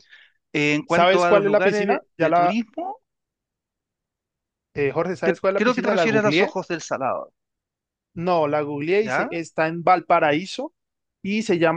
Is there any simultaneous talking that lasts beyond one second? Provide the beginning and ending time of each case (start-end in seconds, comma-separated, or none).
0.9-2.6, 5.2-6.6